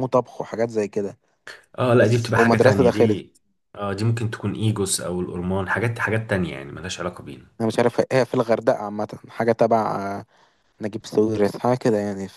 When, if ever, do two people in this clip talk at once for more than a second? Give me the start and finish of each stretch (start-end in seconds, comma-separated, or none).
1.9-3.2